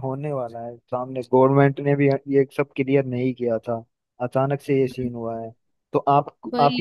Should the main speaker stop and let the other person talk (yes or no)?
no